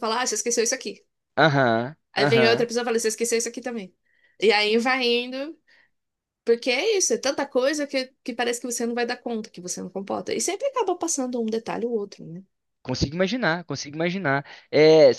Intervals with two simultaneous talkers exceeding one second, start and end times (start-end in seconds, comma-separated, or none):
none